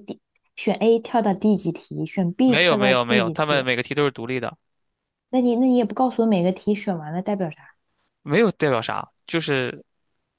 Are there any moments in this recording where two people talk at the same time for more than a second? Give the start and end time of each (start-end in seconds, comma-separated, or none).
2.4-3.7